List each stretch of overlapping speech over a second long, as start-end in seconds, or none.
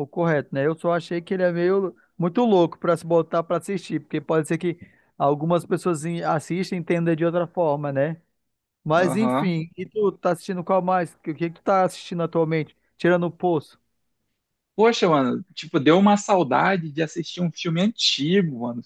none